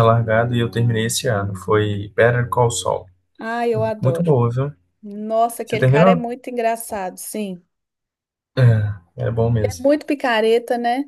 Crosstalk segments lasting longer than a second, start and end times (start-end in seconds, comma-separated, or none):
none